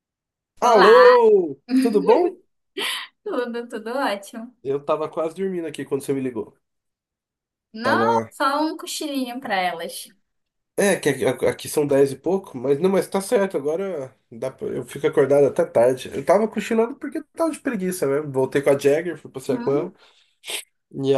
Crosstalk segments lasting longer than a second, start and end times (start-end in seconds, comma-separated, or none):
none